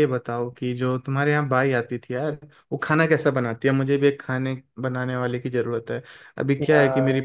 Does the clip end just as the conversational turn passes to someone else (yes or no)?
no